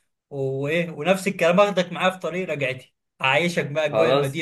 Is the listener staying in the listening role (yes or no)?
yes